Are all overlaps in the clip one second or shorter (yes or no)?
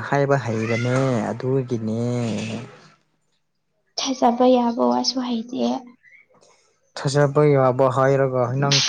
yes